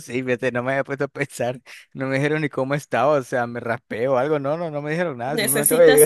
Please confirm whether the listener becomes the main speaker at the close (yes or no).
yes